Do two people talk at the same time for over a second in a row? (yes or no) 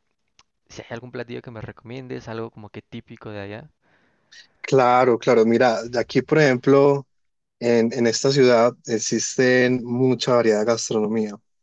no